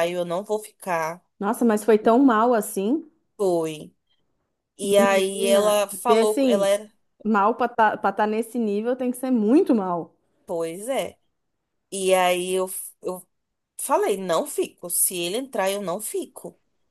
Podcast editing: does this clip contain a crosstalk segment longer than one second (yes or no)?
yes